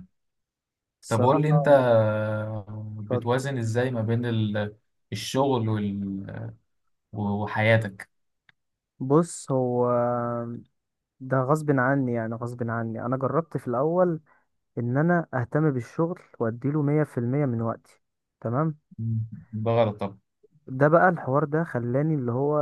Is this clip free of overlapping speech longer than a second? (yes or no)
yes